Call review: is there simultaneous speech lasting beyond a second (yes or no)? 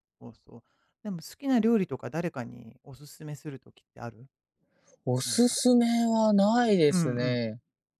no